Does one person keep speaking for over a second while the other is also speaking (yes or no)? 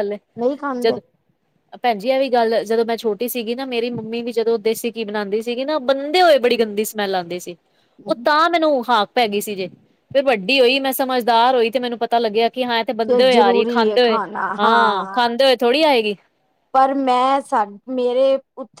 no